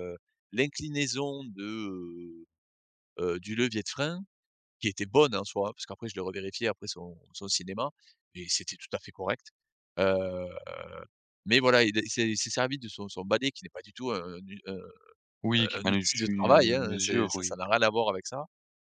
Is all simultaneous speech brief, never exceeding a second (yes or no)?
no